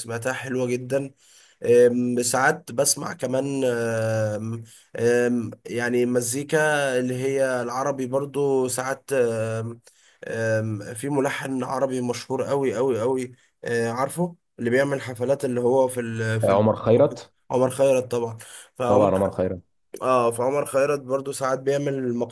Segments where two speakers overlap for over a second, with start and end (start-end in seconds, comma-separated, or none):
none